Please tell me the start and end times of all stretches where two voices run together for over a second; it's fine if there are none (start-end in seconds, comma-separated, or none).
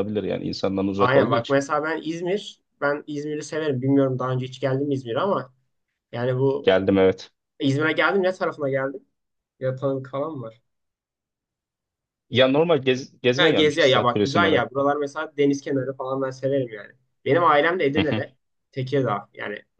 13.3-14.6